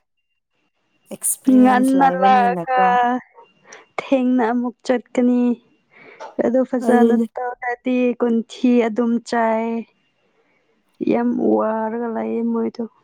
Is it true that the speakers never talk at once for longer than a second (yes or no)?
no